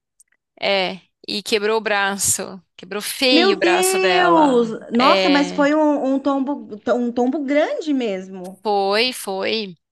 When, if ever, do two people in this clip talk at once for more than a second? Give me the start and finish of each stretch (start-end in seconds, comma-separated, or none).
3.3-5.7